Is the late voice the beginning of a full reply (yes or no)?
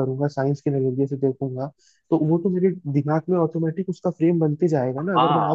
yes